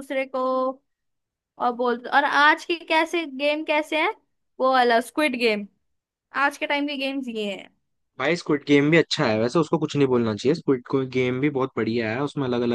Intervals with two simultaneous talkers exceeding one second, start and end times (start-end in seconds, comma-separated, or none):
none